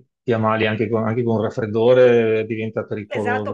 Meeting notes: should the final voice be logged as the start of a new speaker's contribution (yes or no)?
yes